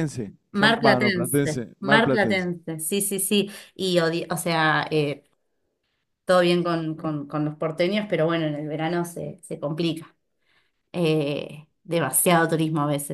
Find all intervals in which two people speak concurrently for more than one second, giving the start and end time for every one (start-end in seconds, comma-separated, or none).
0.5-2.5